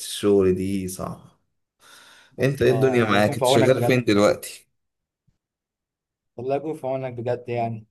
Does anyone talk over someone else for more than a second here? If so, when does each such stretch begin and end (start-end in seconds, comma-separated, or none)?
2.4-4.0